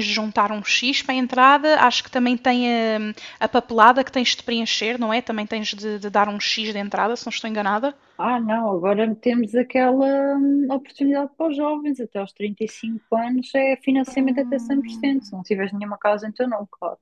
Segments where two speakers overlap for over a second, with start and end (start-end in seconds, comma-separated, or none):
14.0-15.3